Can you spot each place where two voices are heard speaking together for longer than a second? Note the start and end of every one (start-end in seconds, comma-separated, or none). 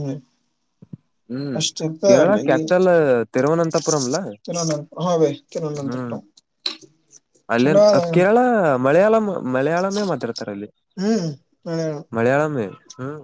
none